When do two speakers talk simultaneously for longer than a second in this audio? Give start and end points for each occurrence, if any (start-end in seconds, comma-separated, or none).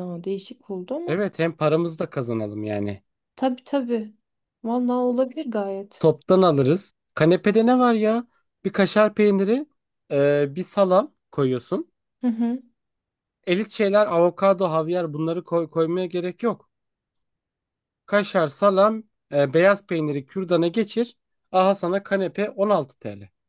none